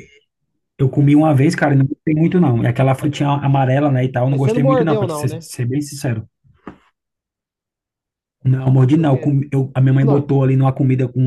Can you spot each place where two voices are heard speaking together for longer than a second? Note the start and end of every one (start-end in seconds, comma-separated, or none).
4.3-5.5